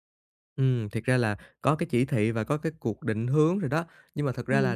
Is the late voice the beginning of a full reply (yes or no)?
no